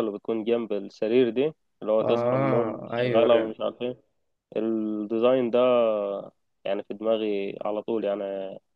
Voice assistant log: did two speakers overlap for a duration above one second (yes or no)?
yes